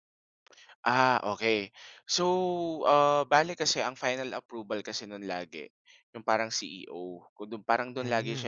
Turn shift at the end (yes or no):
no